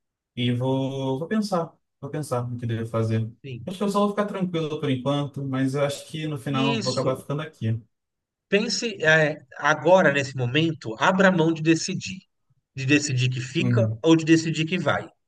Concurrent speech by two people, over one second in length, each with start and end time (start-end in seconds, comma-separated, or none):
none